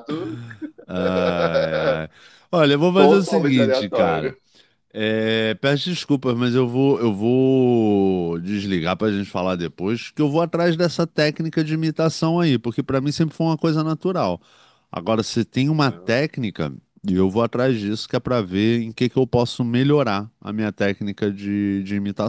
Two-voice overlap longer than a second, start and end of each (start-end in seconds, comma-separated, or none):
3.0-4.3